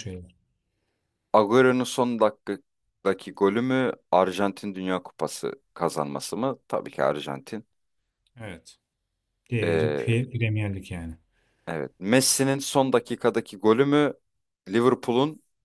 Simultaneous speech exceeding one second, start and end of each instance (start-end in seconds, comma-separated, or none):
none